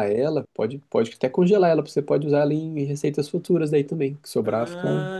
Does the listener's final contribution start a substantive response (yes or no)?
yes